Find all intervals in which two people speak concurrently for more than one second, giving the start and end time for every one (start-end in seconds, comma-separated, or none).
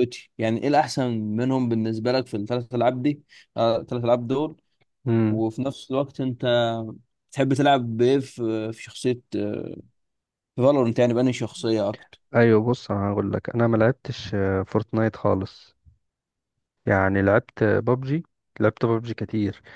none